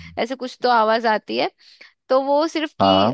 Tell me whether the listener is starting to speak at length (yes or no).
no